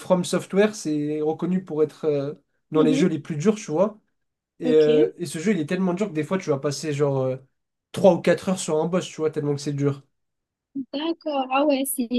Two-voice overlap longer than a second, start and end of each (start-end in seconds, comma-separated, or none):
none